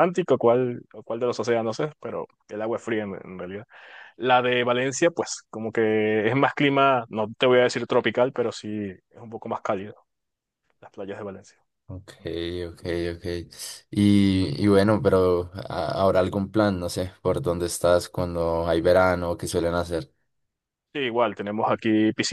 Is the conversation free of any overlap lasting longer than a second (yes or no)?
yes